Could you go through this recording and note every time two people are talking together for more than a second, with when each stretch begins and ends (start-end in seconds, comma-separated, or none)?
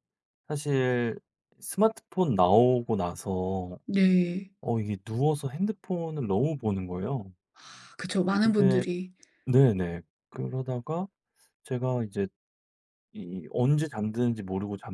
none